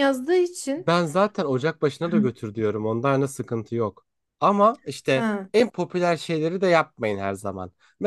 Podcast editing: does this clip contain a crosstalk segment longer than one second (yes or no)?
no